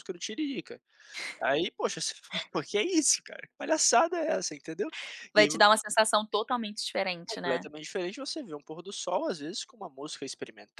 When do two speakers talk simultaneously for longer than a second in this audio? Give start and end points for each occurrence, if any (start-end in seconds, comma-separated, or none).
none